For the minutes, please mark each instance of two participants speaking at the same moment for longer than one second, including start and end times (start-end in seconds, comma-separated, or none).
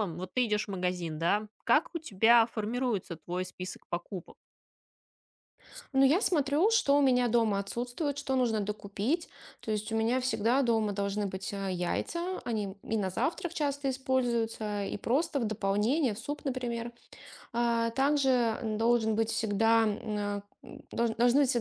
none